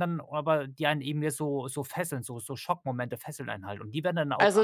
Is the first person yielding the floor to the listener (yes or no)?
yes